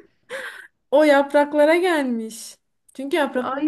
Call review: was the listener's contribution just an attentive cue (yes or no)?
yes